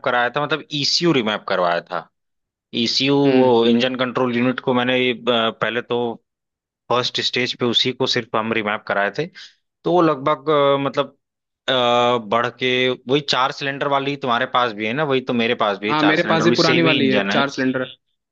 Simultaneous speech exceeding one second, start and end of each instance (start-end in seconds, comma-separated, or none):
15.9-17.4